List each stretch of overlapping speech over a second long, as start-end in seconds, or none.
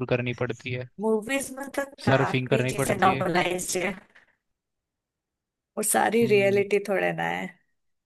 2.0-3.3